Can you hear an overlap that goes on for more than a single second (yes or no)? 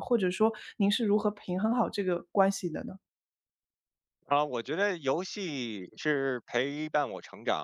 no